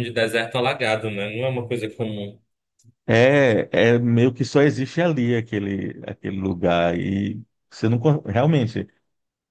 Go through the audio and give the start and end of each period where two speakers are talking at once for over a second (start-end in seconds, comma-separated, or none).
none